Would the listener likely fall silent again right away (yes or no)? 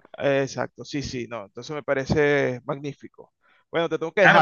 no